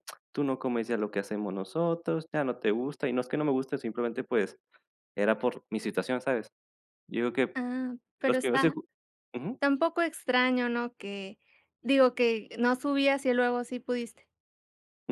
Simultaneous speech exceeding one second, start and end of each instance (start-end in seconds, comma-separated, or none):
none